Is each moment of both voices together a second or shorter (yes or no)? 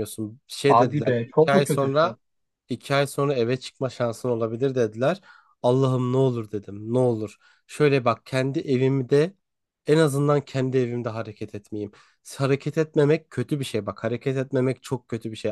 no